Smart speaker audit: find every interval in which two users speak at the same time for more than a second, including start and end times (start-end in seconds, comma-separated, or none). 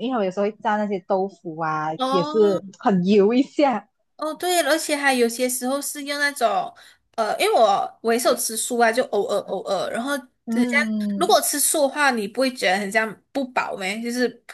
none